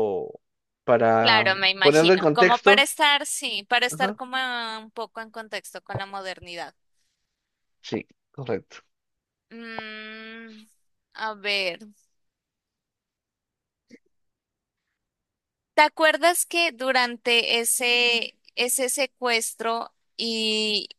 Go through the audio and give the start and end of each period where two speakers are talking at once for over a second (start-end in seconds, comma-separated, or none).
1.2-2.9